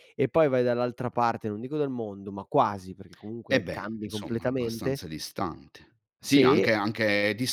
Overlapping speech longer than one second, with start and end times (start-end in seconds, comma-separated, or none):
3.5-5.0